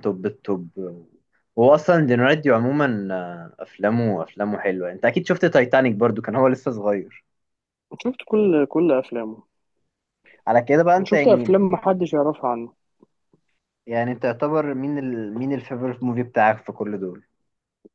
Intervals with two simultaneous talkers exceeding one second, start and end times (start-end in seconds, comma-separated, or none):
none